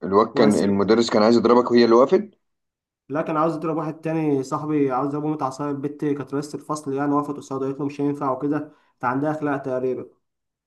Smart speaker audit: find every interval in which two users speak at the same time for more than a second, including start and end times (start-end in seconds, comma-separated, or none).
none